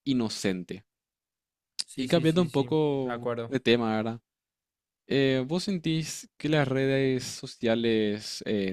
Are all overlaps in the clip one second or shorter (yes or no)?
no